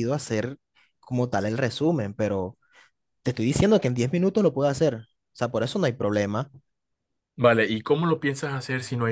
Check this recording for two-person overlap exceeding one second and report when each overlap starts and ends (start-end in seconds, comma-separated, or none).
none